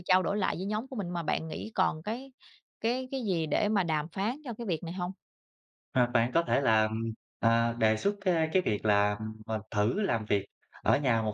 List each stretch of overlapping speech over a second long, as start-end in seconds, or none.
none